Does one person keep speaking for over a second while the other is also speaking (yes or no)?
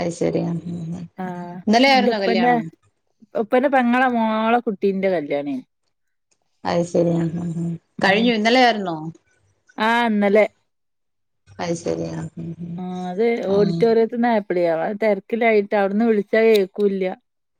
no